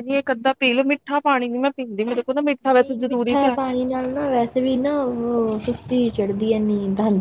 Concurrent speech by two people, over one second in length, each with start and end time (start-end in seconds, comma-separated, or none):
2.7-4.1